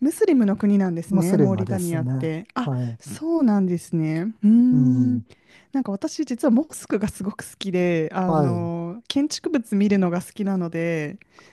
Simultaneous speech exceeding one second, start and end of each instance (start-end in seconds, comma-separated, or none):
1.1-3.0